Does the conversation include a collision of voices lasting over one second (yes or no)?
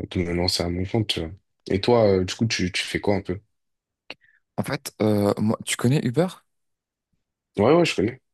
no